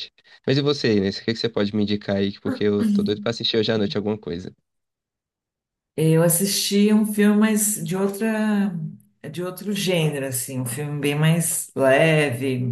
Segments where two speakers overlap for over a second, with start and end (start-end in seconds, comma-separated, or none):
none